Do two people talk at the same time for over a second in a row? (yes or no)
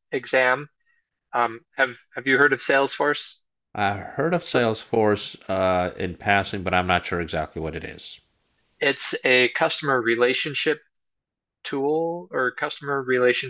no